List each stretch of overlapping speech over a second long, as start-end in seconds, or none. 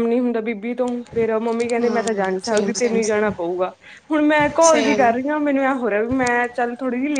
1.8-3.3